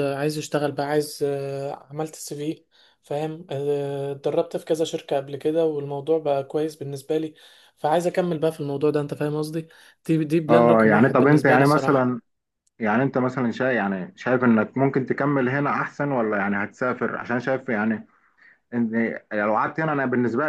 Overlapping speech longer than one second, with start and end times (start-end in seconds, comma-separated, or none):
10.5-12.1